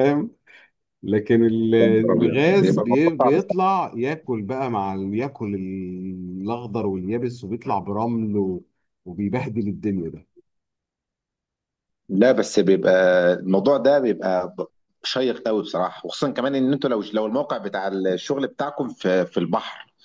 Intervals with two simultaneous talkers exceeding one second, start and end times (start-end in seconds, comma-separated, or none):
1.8-3.5